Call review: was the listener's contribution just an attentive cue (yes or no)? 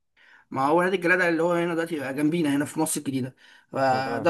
yes